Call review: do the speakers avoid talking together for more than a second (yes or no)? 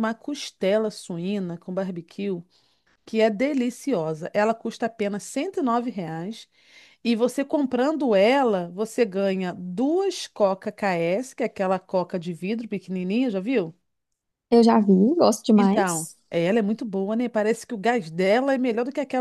yes